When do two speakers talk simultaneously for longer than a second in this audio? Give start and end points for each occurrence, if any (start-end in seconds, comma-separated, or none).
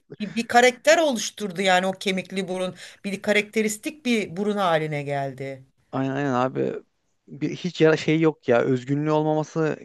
none